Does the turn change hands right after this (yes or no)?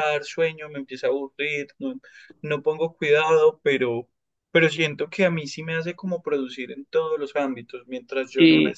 no